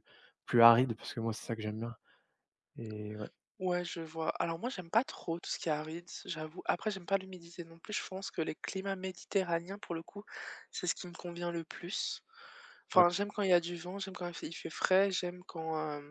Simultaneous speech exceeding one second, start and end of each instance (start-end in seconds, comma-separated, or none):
none